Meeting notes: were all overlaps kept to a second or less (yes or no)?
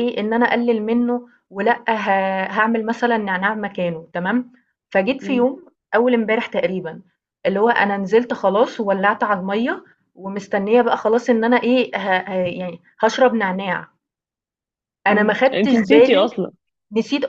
no